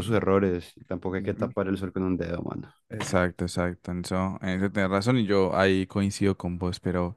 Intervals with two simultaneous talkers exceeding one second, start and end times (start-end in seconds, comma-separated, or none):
none